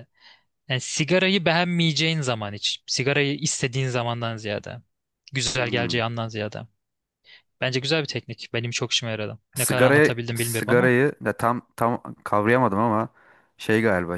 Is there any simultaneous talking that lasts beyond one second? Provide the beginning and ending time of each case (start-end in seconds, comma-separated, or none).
9.6-10.9